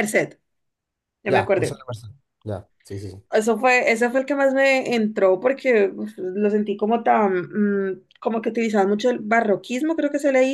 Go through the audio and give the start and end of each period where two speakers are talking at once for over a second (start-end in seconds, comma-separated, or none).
none